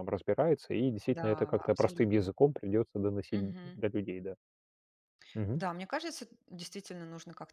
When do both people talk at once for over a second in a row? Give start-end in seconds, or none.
1.1-2.3